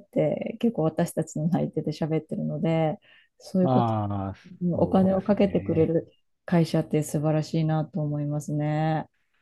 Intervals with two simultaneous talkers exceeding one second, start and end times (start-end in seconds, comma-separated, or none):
4.7-5.9